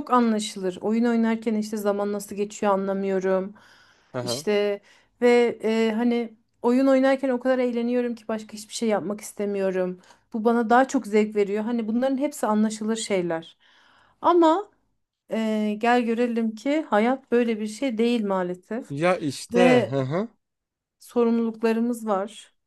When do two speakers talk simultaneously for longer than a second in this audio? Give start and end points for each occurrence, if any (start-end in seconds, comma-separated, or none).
none